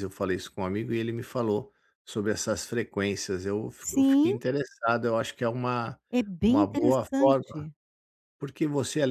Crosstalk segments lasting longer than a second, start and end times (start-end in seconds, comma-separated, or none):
6.5-7.7